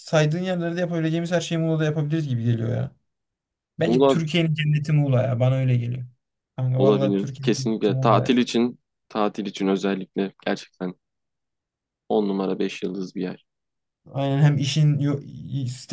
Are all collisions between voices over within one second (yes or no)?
no